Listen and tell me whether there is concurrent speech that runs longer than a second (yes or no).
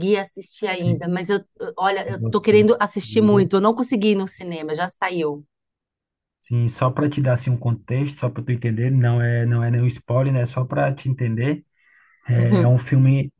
yes